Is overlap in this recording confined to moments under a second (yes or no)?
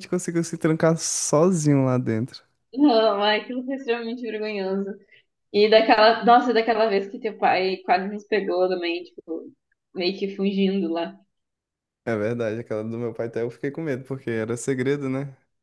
yes